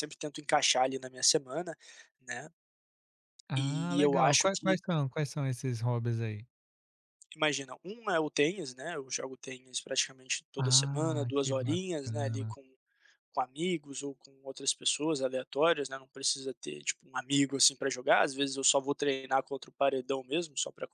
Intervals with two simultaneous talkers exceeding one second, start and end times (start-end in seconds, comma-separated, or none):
3.6-4.8, 10.6-12.5